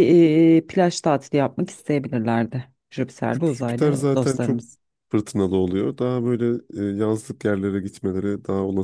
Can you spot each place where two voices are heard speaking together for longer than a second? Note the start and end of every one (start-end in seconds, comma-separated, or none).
3.3-4.6